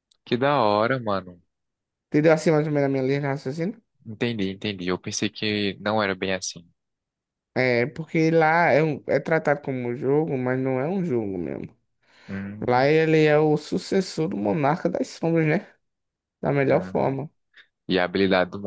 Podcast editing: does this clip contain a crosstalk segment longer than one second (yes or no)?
no